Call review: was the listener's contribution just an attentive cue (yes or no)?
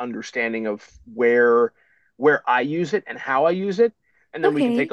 yes